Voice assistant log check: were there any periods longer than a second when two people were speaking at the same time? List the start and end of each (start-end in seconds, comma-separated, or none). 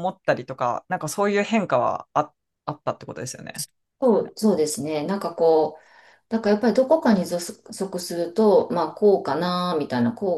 none